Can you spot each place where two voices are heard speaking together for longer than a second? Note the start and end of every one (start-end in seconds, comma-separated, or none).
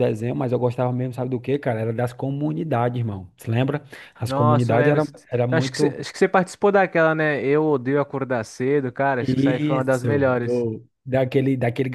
4.2-6.0, 9.2-10.7